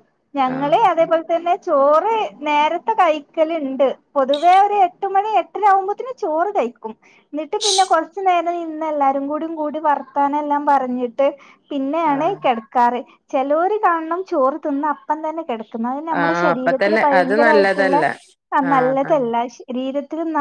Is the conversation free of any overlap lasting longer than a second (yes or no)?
no